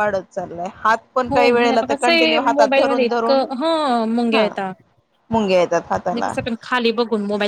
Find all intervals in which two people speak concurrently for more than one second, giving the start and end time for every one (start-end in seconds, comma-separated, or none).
1.3-3.4